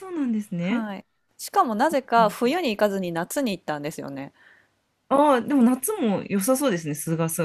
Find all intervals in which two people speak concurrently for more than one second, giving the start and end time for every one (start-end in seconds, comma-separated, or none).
none